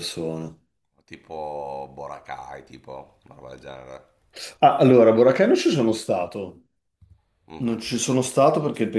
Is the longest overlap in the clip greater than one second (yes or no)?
no